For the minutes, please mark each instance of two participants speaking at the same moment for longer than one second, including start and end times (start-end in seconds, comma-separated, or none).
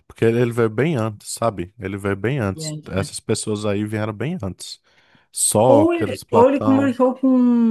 5.7-7.0